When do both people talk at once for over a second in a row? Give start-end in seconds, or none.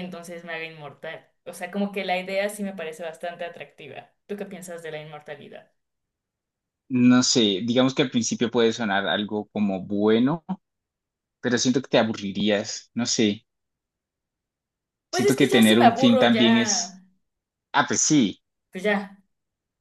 15.1-17.0